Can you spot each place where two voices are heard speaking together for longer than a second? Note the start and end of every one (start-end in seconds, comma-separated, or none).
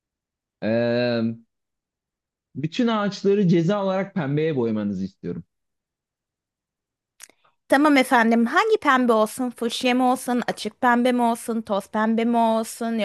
none